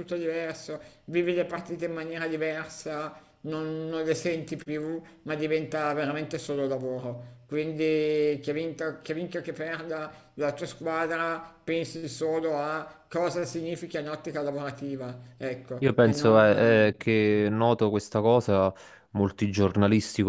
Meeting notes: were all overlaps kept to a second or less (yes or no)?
no